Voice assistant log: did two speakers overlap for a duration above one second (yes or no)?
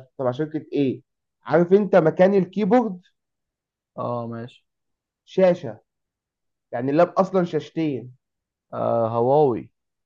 no